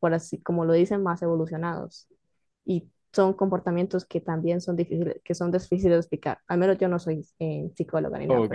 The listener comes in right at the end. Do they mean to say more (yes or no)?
yes